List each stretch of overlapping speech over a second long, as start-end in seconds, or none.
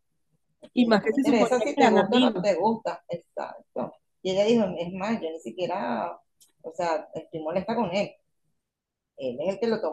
0.7-2.5